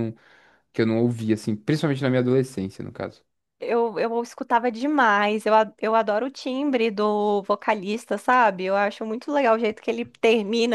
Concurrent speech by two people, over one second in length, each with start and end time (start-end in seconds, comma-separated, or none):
none